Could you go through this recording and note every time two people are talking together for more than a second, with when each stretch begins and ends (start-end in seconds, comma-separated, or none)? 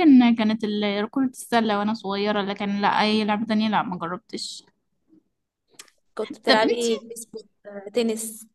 none